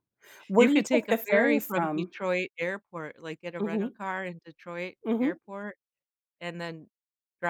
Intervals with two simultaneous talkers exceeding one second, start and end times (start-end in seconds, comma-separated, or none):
0.6-2.1